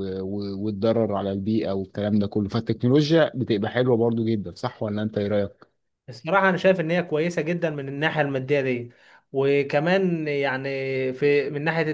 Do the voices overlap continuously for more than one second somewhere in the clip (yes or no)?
no